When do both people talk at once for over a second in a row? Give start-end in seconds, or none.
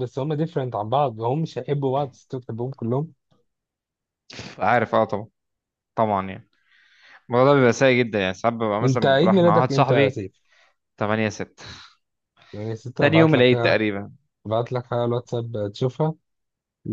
8.8-10.2